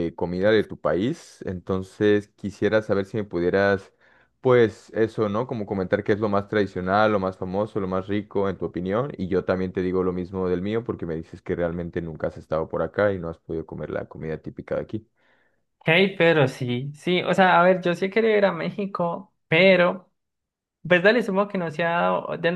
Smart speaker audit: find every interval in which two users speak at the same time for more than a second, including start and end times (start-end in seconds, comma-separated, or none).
none